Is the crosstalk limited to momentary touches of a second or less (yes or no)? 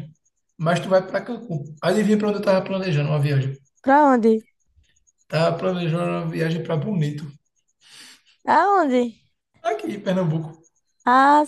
yes